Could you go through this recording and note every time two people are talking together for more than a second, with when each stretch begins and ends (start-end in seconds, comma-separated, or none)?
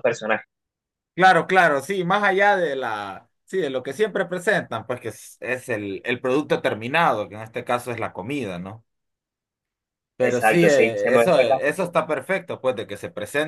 10.2-11.8